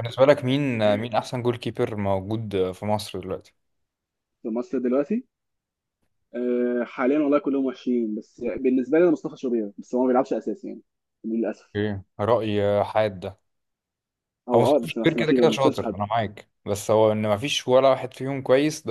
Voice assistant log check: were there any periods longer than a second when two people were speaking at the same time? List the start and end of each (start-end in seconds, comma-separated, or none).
14.5-16.0